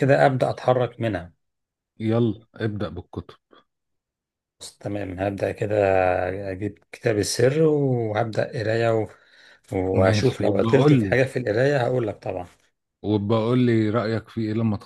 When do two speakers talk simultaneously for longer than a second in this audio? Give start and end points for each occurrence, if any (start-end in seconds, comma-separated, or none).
9.9-11.2